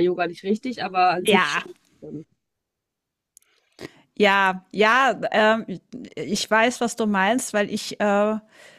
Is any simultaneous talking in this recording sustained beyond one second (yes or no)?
no